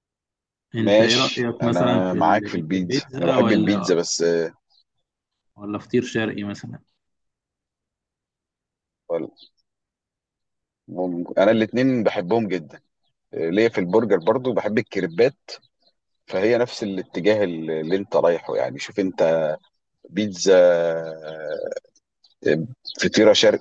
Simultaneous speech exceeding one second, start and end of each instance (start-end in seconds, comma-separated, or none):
0.8-3.9